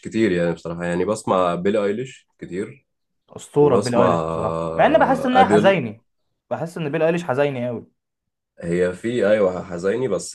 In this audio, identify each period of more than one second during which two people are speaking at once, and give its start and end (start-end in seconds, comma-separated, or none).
3.6-5.8